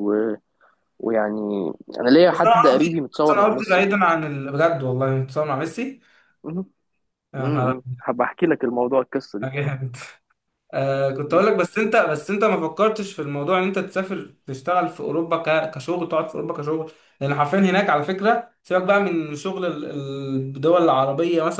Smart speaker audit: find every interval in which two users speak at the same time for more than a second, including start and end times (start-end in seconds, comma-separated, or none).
2.3-3.8